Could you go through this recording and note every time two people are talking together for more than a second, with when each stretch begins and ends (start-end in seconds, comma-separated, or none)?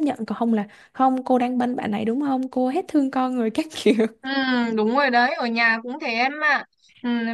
none